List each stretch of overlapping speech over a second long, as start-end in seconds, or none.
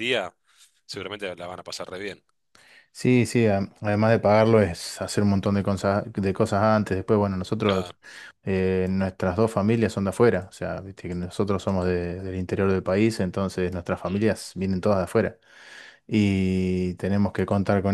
none